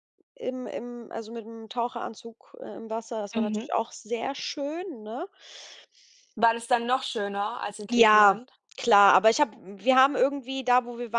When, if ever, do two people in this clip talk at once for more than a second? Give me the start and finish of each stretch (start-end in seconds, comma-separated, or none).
none